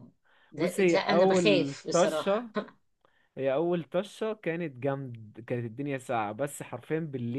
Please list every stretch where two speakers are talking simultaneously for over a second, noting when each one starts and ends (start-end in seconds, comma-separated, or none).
0.6-2.5